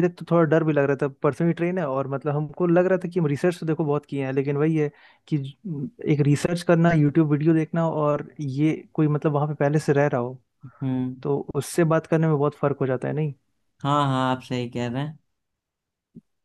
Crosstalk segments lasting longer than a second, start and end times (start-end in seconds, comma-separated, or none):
none